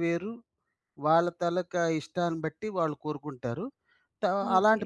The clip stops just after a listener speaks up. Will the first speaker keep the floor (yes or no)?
yes